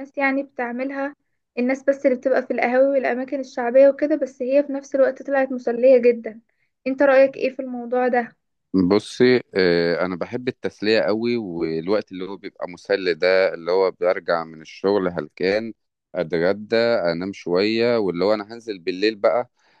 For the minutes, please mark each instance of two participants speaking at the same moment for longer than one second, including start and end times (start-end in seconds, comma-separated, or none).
none